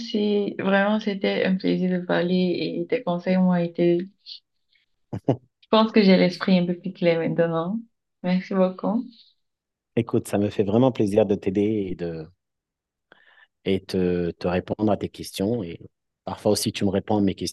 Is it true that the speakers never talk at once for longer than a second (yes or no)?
yes